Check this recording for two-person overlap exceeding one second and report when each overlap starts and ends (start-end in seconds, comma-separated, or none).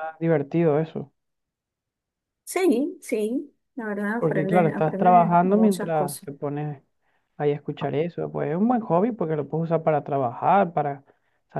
4.2-6.3